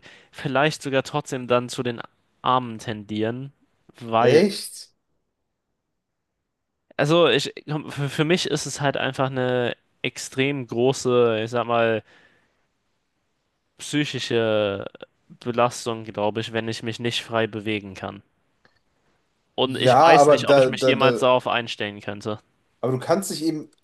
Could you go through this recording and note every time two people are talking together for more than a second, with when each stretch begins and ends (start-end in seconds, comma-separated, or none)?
19.6-21.2